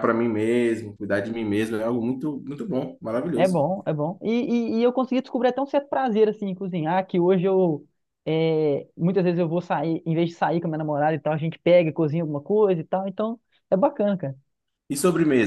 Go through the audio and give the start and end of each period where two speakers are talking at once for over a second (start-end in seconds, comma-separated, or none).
none